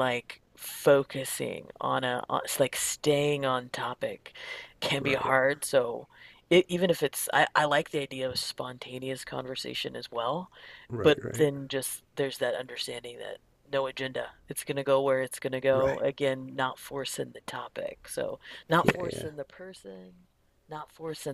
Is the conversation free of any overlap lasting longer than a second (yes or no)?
yes